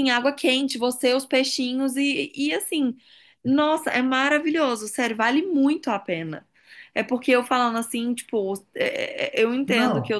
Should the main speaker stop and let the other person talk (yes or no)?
no